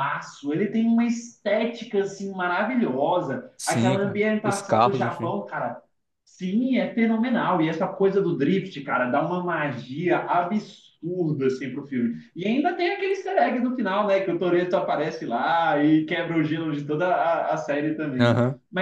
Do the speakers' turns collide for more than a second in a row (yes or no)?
yes